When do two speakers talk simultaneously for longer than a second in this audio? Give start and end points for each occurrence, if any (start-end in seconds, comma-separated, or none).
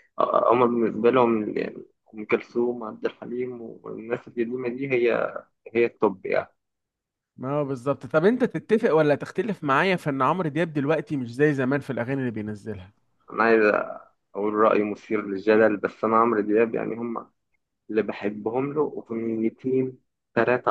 none